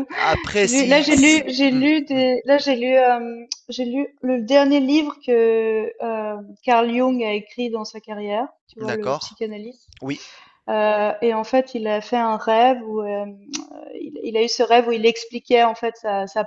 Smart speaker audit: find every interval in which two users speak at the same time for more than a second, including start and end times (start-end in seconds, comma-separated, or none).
0.5-2.2